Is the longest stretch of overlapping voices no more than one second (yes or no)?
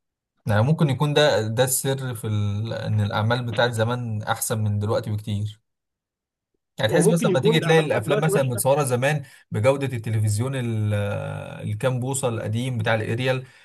no